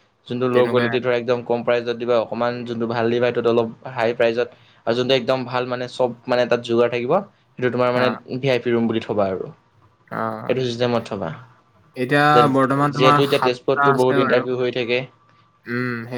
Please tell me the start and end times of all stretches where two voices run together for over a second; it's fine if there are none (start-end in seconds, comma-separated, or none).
12.9-14.4